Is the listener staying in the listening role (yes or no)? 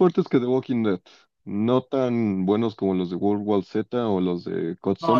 no